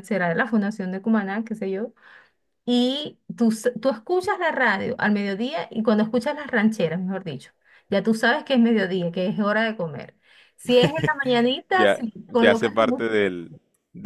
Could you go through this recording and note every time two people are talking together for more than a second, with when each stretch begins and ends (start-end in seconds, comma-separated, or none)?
11.7-13.3